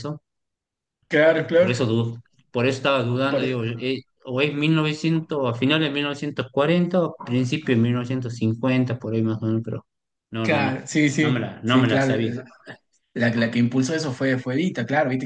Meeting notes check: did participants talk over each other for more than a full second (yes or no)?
yes